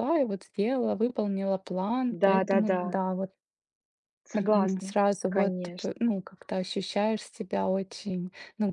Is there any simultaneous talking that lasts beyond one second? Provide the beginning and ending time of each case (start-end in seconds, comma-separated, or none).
4.3-6.0